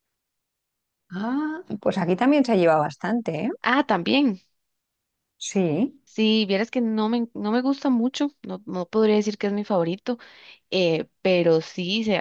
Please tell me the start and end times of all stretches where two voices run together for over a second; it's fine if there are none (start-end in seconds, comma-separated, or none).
none